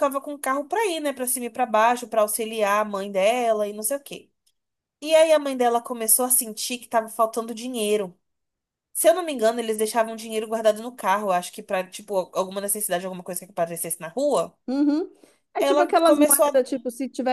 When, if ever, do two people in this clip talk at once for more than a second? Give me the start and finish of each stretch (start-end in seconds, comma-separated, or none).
15.6-16.8